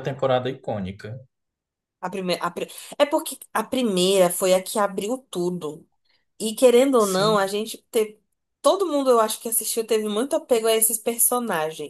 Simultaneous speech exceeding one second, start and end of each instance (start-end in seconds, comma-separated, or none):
none